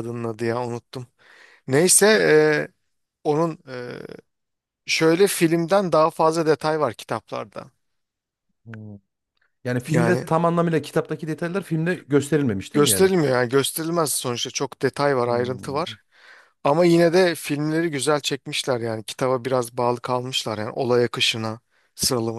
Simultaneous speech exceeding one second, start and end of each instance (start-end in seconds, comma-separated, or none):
none